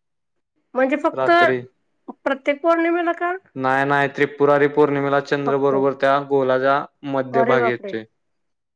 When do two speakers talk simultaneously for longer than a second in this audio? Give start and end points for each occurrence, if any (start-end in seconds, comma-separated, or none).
none